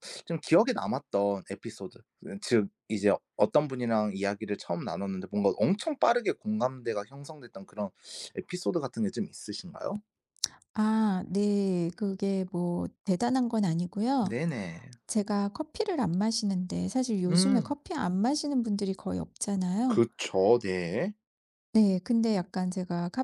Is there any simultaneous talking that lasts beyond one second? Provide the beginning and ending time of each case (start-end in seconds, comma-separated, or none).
none